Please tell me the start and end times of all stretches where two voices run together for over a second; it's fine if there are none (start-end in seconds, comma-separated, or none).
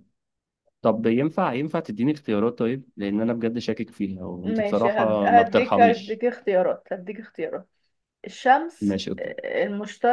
4.5-6.2